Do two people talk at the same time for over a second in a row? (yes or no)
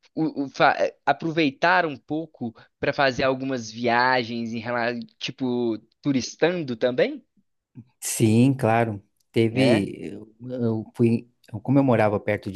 no